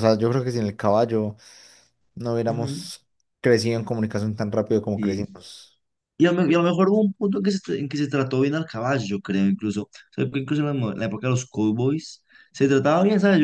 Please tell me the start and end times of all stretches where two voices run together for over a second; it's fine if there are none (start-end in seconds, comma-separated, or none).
none